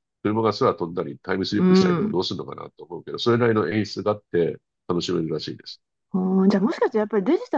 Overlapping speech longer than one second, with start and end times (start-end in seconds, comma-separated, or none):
none